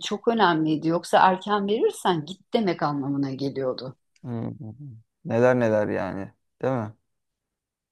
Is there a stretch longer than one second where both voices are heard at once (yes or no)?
no